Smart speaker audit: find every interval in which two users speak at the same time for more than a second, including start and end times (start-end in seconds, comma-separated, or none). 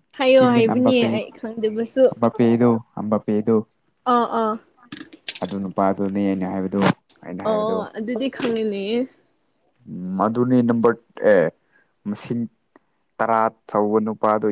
none